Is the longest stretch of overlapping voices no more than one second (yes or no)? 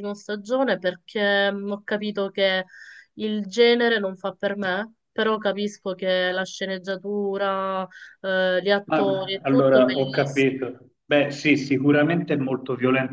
no